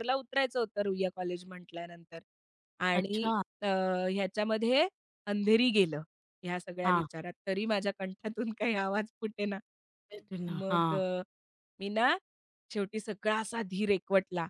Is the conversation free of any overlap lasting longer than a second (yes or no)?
yes